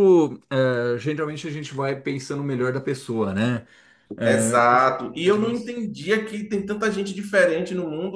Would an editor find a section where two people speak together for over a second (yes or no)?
yes